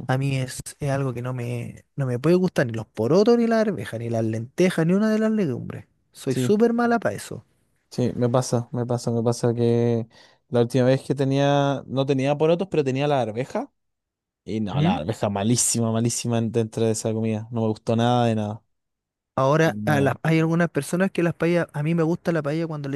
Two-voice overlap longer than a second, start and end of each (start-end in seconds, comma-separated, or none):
none